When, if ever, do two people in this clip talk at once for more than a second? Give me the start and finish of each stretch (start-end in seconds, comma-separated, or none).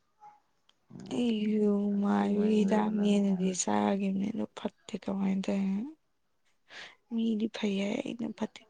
2.1-3.8